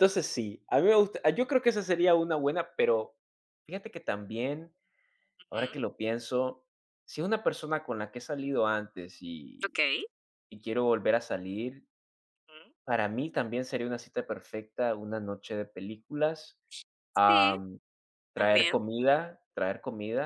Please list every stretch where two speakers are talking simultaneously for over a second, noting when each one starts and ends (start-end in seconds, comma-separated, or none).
none